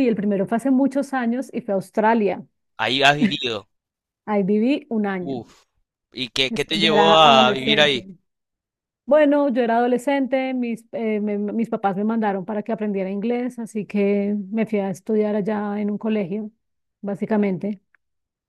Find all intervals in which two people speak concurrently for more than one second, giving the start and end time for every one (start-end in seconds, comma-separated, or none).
6.5-8.0